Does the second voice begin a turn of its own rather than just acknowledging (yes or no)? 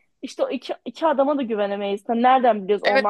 yes